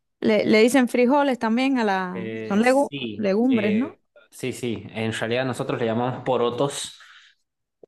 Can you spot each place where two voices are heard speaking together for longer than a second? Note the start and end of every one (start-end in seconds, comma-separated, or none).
2.1-4.0